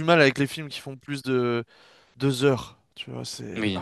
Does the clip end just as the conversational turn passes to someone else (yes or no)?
yes